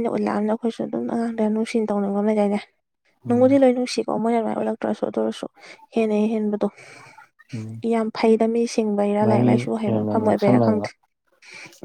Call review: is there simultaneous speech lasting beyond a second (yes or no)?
yes